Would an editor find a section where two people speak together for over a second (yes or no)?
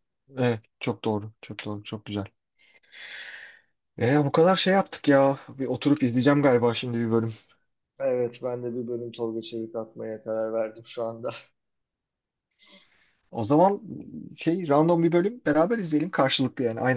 no